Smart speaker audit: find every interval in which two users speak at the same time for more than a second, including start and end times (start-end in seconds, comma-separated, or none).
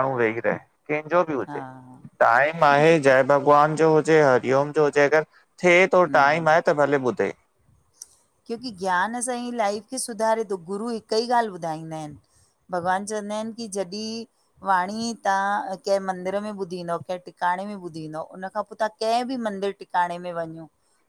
none